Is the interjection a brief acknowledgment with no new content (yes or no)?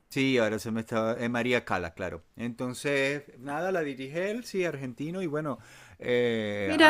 yes